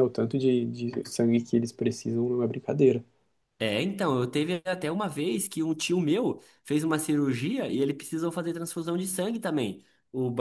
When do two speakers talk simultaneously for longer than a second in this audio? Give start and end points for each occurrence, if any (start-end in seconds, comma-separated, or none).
none